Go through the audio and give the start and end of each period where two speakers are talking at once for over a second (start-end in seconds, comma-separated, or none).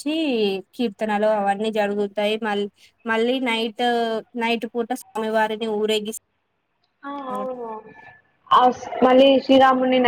none